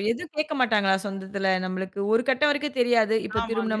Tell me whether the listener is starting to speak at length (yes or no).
no